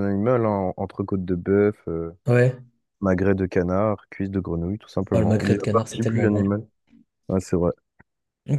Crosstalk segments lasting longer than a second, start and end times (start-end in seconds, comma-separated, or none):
5.1-6.5